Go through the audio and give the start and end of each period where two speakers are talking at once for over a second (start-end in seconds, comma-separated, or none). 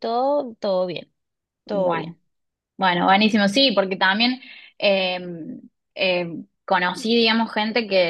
none